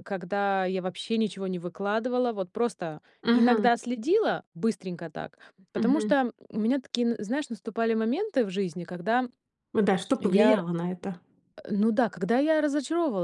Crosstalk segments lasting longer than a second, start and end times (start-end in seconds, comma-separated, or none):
none